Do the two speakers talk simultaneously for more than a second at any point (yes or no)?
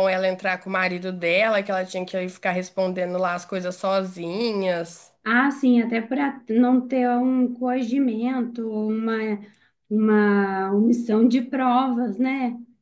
no